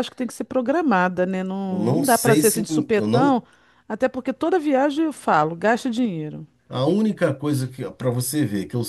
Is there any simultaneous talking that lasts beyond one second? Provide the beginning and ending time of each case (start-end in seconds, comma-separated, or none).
1.7-3.4